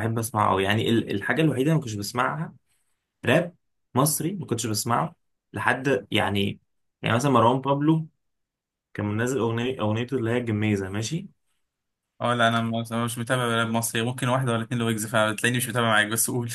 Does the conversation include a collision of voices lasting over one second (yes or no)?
no